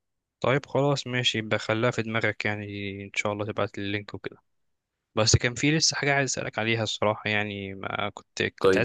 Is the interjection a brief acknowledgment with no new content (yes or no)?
yes